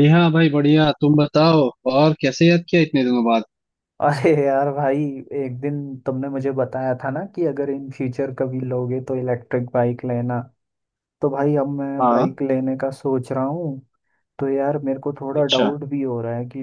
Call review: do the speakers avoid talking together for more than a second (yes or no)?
yes